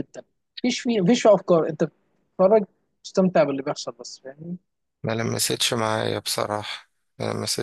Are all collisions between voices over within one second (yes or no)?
yes